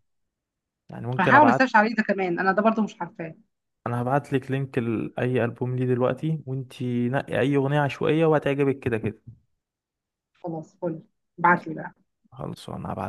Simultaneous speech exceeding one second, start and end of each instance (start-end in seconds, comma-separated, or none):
none